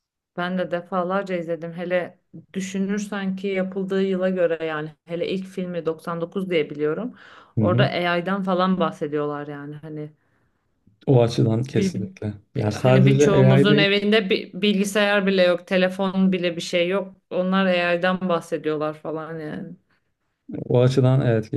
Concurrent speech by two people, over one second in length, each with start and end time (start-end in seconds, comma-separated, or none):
12.6-13.9